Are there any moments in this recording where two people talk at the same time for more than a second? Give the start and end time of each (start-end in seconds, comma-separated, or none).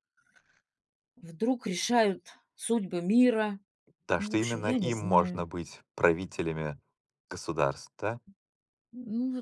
4.2-5.5